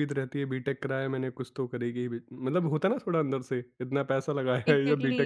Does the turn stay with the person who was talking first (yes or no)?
no